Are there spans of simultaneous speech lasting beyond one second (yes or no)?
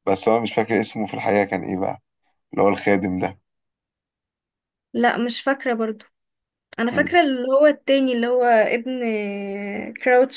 no